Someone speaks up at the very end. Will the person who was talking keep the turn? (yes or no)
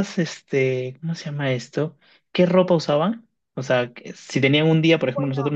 yes